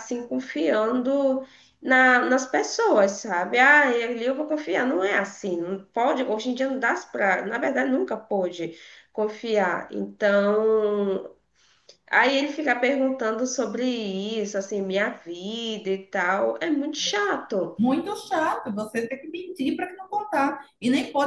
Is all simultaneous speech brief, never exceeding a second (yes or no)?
yes